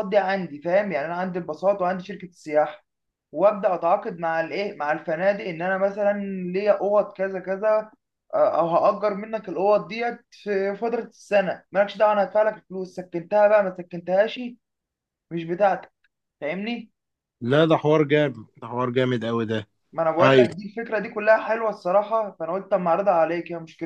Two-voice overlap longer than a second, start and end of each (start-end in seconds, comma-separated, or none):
none